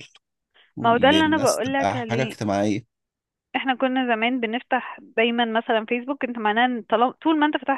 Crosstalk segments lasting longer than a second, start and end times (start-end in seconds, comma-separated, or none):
0.8-2.4